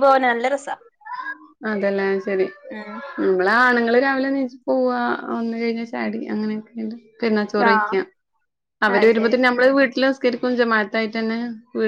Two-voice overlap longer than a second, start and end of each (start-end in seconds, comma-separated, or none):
none